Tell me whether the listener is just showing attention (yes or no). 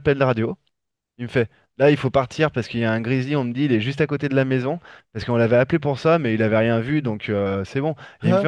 yes